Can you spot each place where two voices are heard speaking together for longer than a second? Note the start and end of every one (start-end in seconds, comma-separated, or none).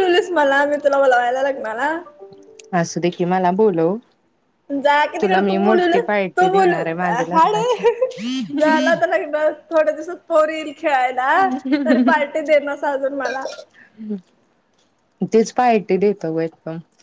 5.2-7.8